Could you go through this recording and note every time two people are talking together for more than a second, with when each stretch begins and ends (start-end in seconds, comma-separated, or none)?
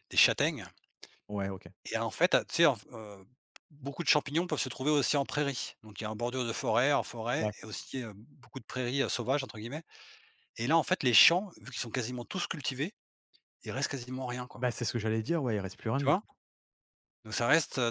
none